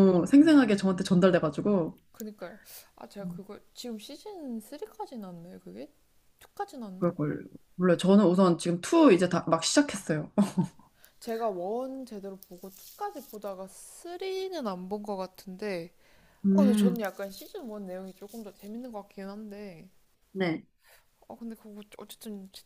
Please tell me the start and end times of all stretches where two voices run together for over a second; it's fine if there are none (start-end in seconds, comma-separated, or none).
none